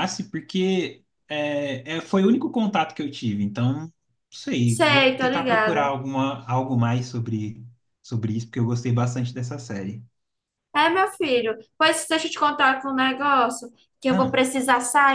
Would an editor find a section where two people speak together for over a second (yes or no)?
yes